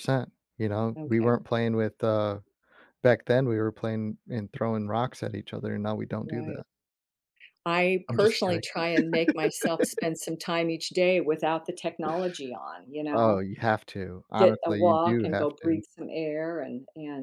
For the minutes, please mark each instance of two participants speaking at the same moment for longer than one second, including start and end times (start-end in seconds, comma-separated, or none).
14.4-15.8